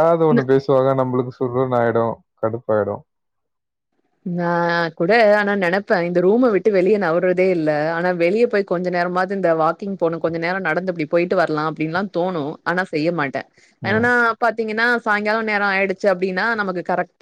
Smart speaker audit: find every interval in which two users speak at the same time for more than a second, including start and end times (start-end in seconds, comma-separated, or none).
none